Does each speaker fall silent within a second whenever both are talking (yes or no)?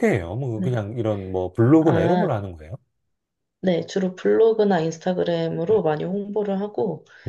yes